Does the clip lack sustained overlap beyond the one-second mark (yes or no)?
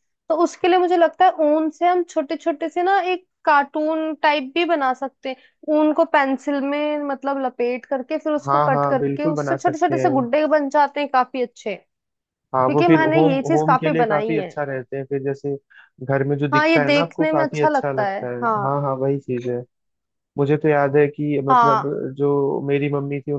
no